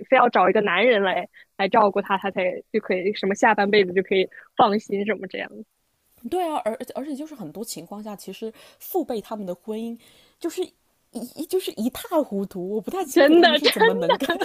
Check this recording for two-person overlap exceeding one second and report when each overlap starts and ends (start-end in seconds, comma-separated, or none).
none